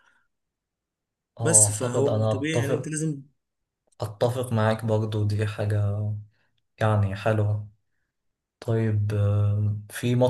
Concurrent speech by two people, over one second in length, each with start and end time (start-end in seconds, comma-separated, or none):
1.4-2.9